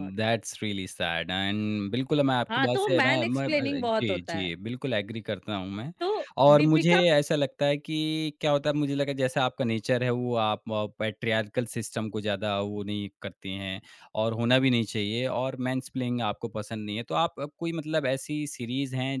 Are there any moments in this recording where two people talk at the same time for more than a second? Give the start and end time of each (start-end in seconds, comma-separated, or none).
2.5-4.5